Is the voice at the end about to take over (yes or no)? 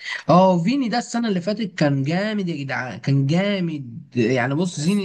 no